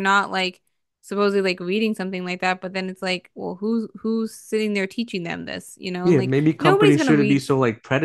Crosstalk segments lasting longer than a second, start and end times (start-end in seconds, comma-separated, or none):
6.0-7.4